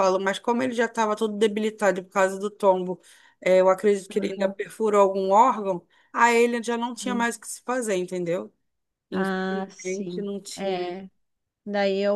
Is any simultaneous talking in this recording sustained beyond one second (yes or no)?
yes